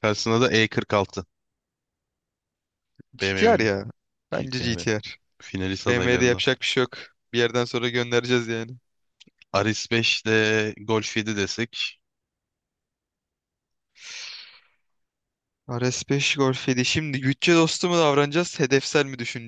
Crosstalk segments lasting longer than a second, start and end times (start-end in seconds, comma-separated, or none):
none